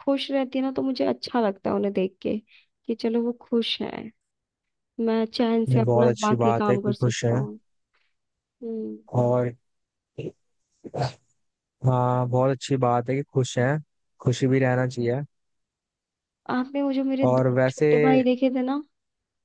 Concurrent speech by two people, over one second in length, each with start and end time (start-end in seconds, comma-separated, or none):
5.7-7.5